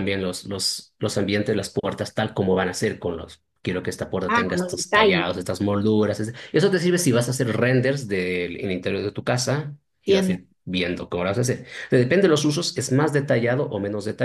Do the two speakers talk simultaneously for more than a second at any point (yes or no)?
yes